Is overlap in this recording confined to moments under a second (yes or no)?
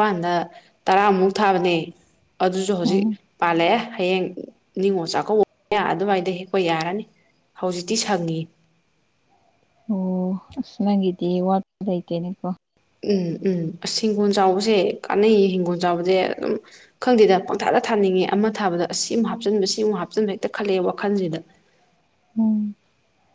yes